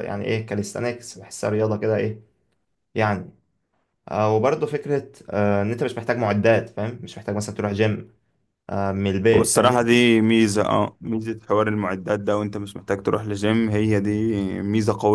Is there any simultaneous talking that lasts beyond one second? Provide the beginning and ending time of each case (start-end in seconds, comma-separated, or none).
none